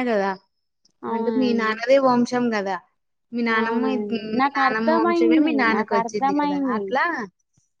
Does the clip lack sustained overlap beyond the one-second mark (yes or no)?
no